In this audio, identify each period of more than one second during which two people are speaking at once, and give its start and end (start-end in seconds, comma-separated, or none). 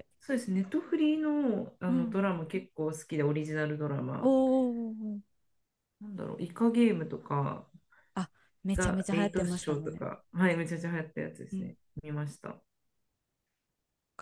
8.7-10.1